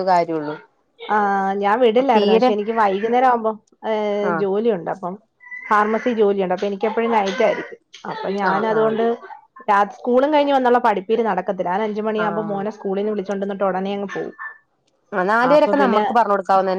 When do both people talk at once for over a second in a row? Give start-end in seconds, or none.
none